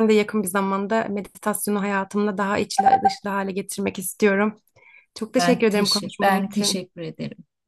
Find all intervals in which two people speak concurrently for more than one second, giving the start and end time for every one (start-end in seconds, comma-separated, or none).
5.4-6.8